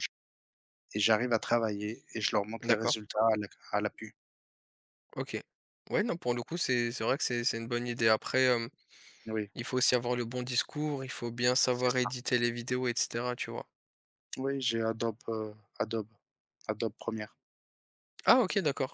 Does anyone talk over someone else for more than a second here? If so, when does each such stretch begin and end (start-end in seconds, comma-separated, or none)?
none